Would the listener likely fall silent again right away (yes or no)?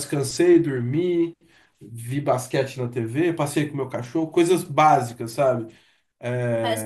no